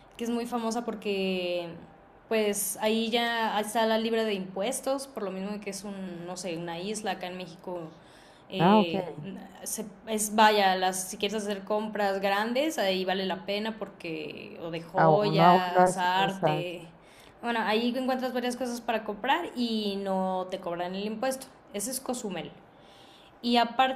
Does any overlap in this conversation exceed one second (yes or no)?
yes